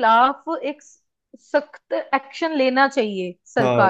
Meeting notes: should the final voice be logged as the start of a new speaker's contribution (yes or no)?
yes